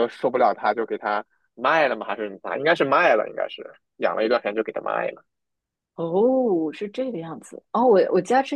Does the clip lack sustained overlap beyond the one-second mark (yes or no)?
yes